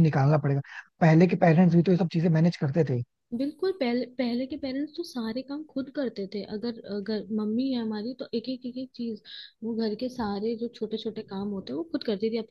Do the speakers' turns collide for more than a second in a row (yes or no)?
no